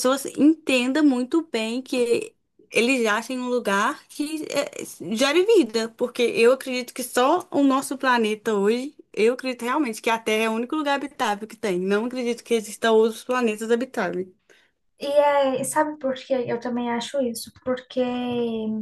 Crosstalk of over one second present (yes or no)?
no